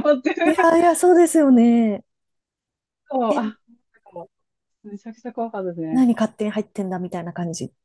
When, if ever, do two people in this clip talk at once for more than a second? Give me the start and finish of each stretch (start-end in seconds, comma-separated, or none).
none